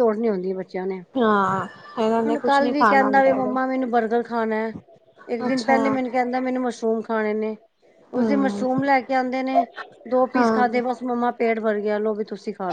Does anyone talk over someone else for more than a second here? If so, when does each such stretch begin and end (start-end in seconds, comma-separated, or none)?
2.3-3.8